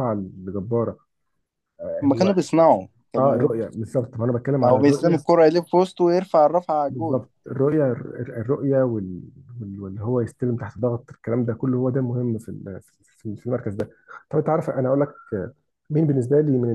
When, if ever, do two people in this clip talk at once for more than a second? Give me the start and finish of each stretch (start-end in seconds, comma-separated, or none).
none